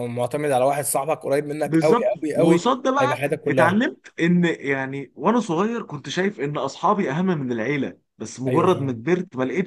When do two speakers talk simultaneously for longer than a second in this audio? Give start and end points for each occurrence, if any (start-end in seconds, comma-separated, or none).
1.6-3.8